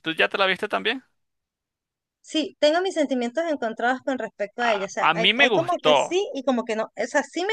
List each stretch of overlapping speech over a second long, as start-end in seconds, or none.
4.6-6.2